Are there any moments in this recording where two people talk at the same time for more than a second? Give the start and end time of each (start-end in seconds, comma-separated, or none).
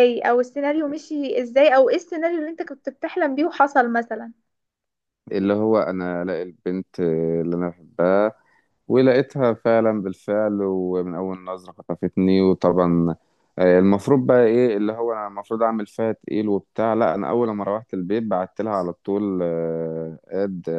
none